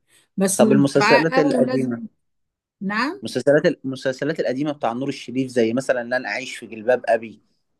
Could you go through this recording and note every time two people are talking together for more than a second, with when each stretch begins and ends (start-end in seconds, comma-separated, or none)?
0.6-2.0